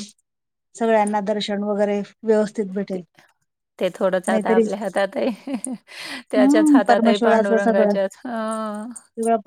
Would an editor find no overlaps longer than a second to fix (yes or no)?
yes